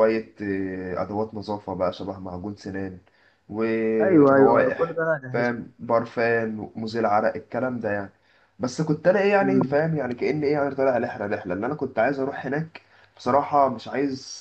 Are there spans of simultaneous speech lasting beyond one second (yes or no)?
yes